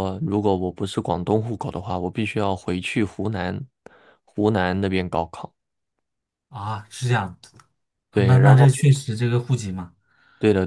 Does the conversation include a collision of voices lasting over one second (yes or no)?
no